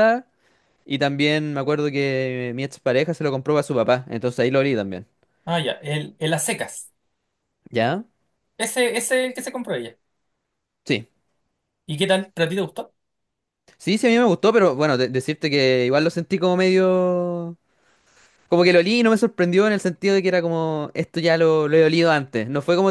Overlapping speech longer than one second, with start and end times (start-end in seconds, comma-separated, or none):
none